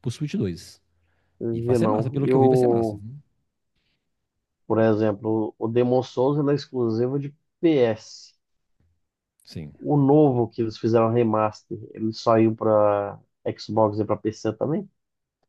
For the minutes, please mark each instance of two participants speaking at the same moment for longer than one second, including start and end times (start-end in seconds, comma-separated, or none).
1.5-3.0